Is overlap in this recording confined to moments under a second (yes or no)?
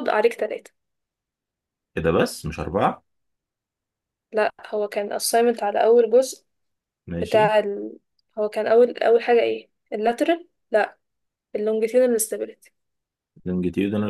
yes